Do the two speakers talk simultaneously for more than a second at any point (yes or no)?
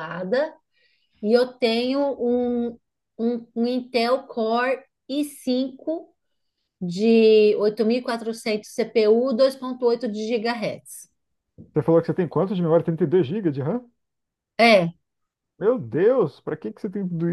no